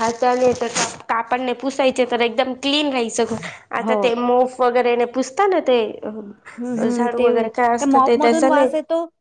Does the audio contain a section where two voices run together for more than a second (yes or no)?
yes